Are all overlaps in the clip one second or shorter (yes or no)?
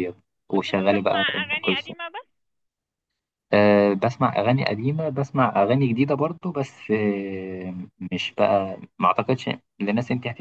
no